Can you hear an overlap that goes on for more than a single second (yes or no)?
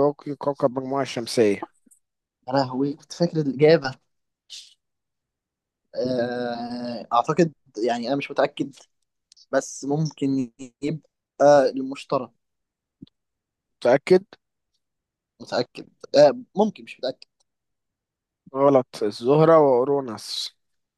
no